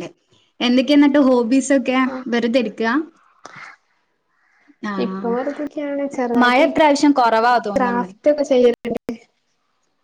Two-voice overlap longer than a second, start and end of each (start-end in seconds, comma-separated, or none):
none